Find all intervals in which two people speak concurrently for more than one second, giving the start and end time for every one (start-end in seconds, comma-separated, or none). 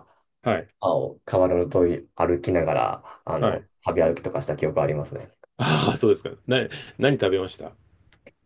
none